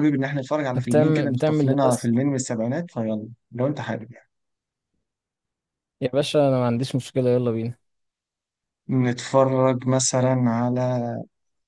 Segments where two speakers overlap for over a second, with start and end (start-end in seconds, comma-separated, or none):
0.8-2.1